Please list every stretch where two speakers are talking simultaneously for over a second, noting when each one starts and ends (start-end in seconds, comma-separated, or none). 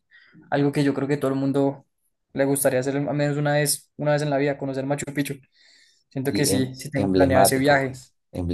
6.3-8.0